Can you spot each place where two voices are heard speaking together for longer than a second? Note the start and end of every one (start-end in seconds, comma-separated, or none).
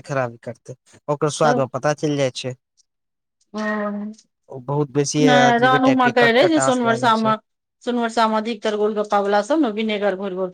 5.3-7.3